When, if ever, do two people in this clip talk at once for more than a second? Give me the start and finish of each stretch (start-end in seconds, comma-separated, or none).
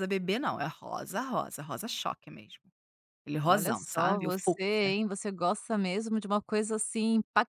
3.5-4.9